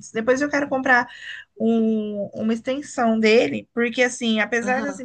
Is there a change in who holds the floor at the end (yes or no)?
no